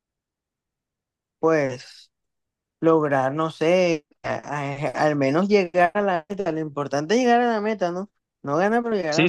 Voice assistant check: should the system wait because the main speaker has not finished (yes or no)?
no